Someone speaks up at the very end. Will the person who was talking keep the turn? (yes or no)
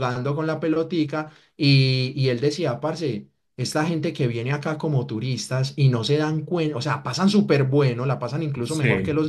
yes